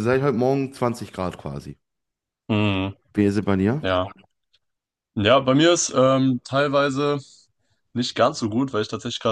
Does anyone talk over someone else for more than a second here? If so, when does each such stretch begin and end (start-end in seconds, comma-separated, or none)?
none